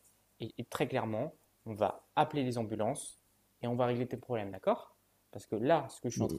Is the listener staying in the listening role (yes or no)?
yes